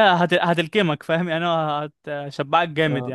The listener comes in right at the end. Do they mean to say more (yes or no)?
yes